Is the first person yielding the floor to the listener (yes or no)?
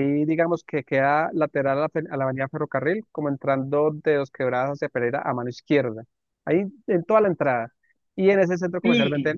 no